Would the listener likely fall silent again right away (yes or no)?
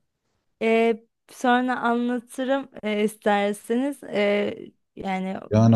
no